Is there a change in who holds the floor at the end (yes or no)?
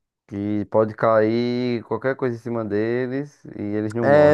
yes